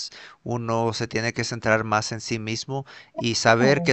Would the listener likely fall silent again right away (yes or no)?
yes